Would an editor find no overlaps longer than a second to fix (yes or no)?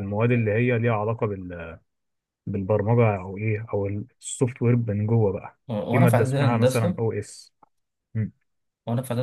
no